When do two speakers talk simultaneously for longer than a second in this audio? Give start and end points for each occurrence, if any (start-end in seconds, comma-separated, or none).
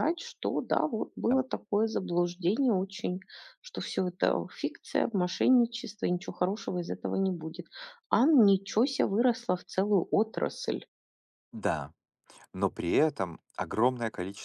none